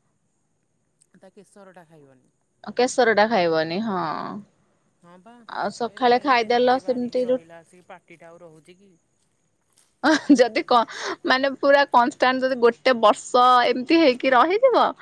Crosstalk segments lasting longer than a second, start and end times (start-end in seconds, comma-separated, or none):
5.9-7.3